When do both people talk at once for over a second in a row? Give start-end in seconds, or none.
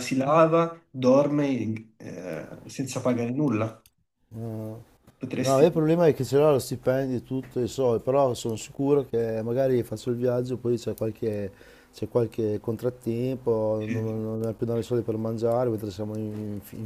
none